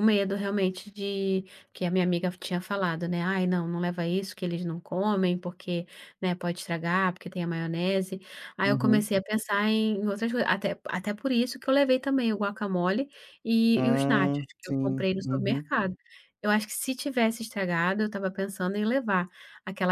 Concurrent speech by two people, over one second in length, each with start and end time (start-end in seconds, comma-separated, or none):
13.8-15.7